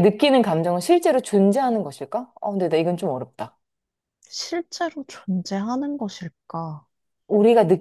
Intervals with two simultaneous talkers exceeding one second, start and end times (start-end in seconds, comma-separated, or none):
none